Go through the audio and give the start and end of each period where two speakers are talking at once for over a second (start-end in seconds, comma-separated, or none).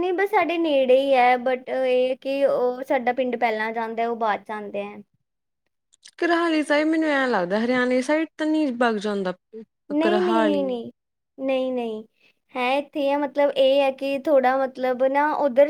none